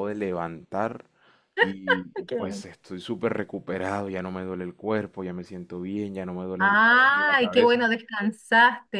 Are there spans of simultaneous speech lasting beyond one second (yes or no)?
yes